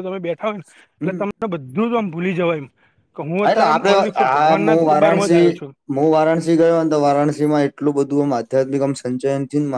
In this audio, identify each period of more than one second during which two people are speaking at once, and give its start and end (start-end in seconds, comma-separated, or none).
3.4-5.5